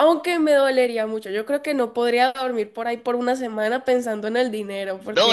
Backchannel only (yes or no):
no